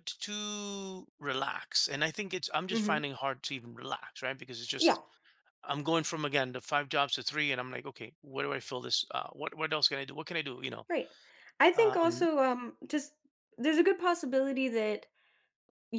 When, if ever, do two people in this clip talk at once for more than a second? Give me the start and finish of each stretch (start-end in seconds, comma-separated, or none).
none